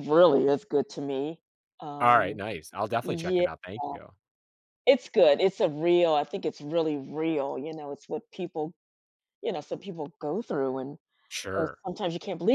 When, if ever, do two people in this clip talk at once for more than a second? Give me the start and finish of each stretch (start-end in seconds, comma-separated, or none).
none